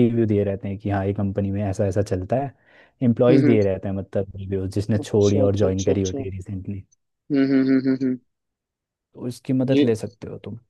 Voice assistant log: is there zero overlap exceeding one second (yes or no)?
no